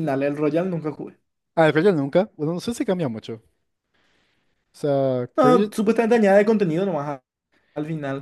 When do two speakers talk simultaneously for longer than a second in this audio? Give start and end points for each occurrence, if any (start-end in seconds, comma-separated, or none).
none